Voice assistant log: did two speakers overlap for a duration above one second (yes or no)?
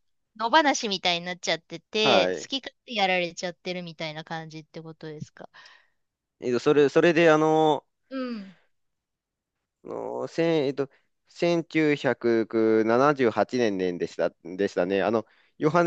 no